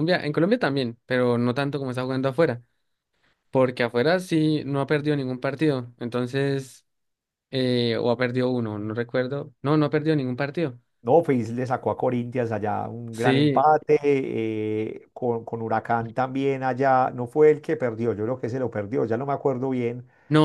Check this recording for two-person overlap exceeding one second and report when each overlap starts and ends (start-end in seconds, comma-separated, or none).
none